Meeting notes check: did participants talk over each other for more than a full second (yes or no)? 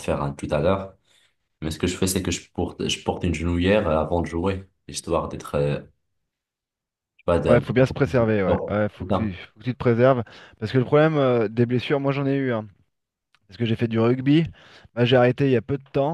yes